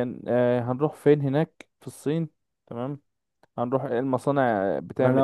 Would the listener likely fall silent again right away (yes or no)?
no